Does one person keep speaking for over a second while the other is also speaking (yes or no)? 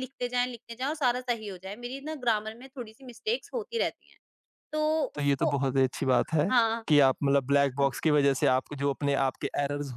no